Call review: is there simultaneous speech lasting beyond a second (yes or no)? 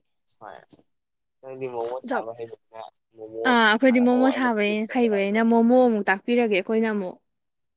yes